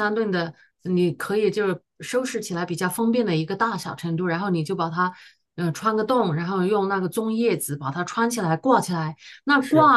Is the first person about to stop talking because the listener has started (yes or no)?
no